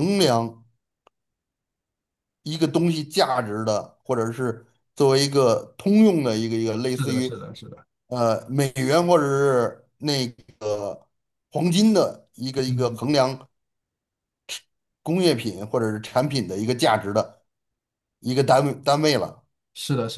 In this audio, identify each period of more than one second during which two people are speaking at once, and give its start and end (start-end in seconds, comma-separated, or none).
none